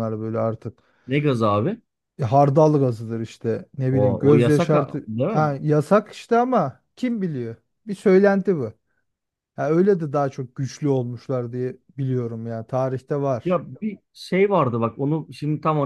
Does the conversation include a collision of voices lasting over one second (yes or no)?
yes